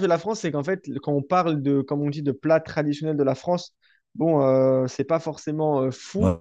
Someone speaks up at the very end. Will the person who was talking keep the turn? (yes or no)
yes